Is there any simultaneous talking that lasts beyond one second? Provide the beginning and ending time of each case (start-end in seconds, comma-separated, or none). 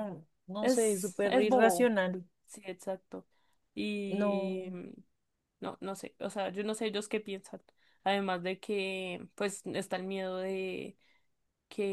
0.6-1.9